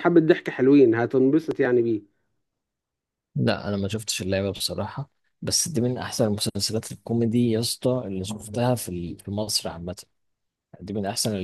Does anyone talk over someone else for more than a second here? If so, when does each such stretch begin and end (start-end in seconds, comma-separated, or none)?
none